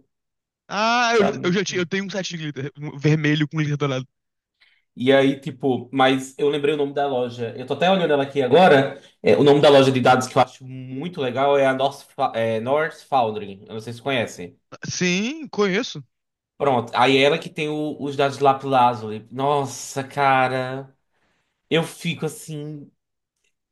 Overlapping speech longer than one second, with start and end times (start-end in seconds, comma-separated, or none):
none